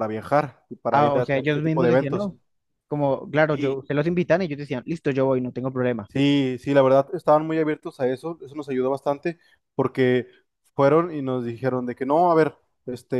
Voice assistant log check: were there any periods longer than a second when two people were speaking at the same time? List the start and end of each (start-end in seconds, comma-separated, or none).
0.9-2.3